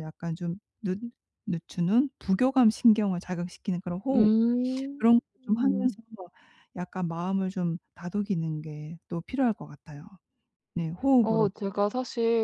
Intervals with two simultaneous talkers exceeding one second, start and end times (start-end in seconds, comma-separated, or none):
none